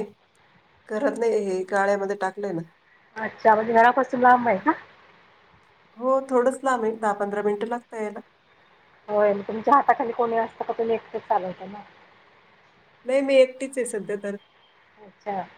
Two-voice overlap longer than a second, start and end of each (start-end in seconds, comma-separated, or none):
none